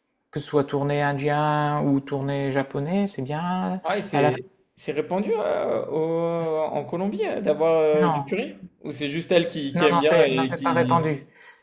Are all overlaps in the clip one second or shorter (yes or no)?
no